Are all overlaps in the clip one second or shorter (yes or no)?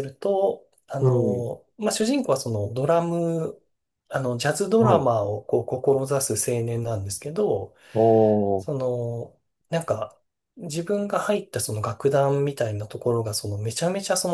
yes